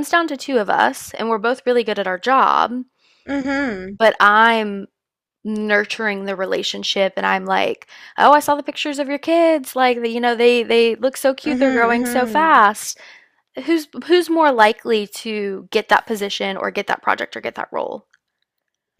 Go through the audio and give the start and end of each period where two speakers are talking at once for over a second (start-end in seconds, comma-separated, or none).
11.4-12.7